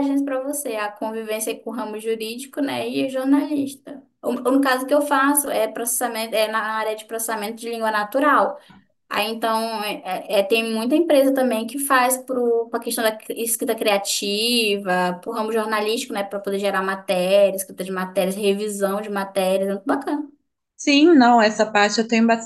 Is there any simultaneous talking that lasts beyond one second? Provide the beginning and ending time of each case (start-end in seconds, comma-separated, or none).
none